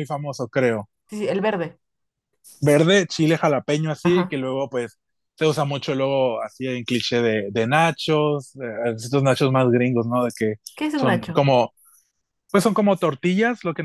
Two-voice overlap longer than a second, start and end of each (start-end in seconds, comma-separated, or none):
none